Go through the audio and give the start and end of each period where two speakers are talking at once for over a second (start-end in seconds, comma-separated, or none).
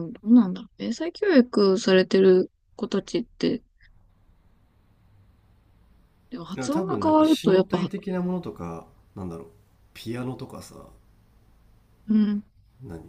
6.6-7.9